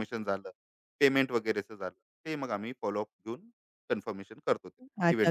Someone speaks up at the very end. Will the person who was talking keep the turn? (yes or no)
no